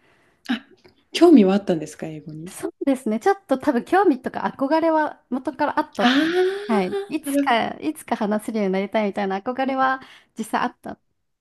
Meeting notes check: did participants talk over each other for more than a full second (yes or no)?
yes